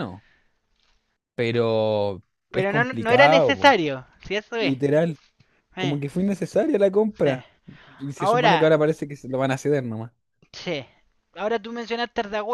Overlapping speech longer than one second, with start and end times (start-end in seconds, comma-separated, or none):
2.5-3.8